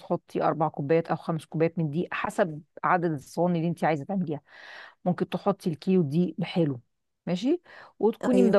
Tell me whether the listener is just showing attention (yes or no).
yes